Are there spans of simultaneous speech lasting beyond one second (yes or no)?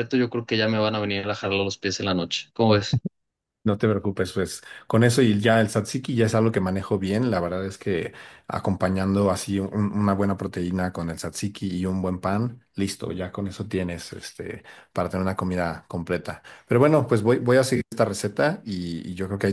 no